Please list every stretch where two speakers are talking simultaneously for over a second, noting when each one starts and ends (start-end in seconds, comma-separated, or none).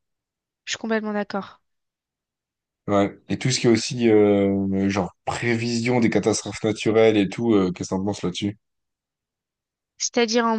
none